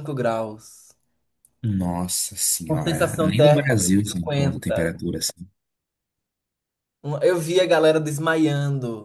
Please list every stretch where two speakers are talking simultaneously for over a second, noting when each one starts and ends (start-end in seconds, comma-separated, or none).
2.7-4.9